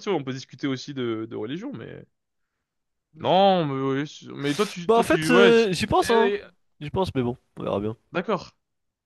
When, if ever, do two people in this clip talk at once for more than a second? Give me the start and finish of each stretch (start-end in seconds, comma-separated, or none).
4.9-6.3